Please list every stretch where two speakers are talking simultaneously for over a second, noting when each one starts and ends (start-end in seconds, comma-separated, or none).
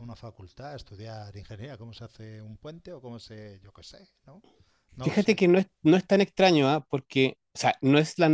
none